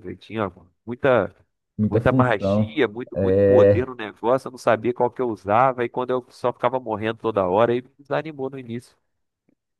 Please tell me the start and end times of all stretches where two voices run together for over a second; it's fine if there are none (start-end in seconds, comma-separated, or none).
1.9-3.9